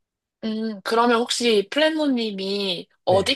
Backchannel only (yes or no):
yes